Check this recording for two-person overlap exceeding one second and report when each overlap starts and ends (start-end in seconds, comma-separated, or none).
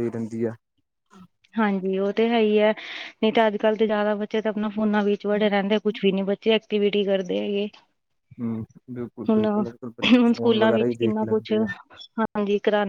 9.3-11.7